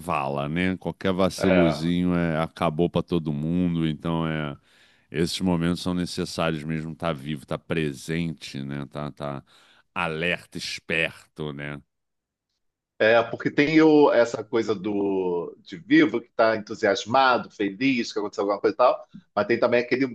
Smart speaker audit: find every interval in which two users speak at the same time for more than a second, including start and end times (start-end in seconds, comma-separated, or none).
none